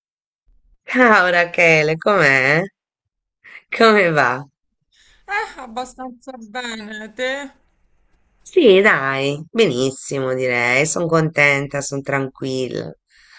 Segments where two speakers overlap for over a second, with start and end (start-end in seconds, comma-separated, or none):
none